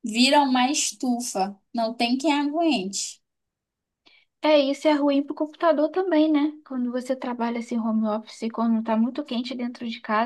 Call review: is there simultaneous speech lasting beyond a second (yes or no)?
no